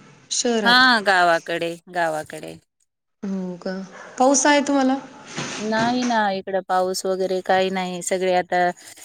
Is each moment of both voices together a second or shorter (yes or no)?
yes